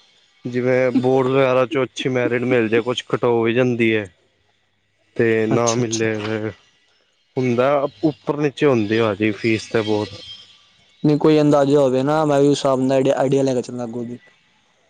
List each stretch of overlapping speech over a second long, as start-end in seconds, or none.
none